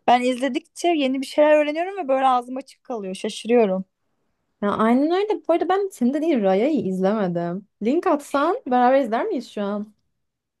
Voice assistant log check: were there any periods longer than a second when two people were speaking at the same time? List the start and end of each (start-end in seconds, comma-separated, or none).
none